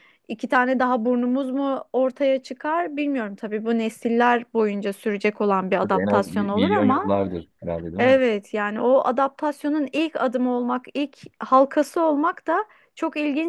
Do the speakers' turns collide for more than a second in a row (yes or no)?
yes